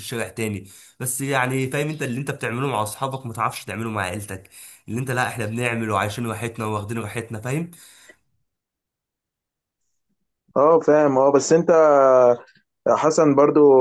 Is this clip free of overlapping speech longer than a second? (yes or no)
yes